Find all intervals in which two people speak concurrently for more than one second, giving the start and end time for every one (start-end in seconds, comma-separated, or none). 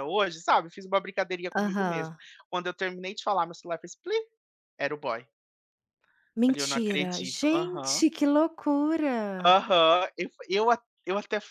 6.5-8.1